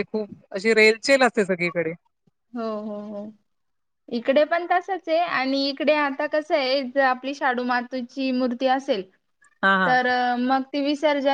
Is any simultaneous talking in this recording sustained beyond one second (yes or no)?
no